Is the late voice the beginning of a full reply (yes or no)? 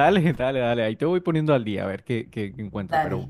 no